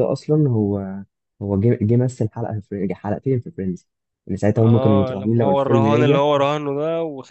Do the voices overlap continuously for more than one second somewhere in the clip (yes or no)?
yes